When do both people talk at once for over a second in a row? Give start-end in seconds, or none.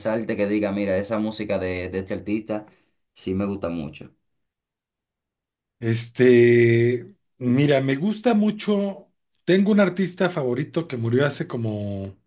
none